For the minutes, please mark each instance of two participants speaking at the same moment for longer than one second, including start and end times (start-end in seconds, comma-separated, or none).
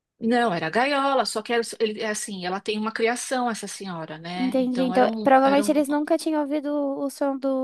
4.3-5.8